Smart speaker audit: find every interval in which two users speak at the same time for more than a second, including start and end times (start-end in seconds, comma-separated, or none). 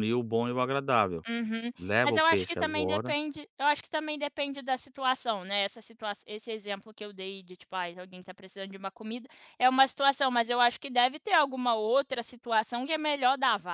1.8-3.1